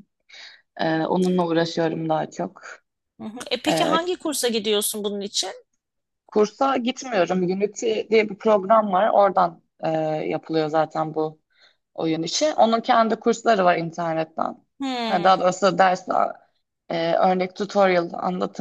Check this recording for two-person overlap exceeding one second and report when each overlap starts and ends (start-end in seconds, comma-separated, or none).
none